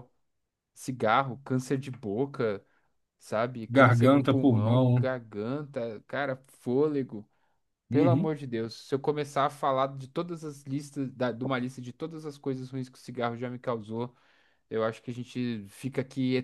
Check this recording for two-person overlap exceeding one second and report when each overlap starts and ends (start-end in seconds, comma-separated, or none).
3.7-5.0